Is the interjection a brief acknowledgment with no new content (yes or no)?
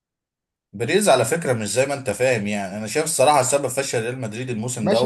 no